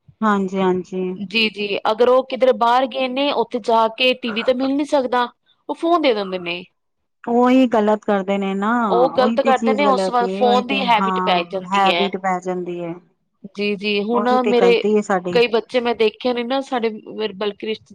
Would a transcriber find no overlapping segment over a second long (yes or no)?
no